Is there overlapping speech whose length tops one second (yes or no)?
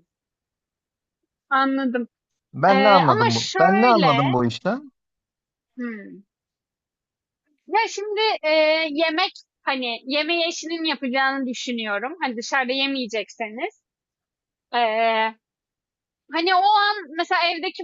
yes